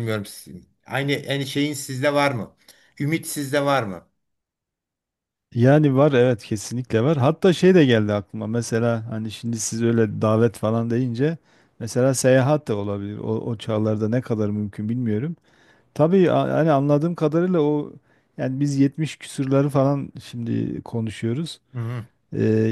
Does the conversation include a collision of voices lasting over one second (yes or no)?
no